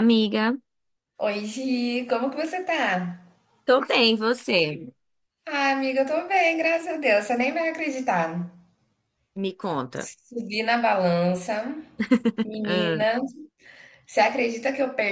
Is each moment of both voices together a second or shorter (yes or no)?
yes